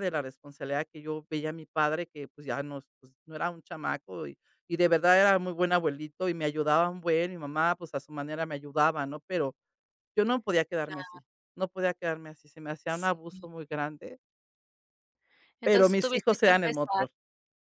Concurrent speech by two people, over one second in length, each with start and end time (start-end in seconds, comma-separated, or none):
15.6-17.1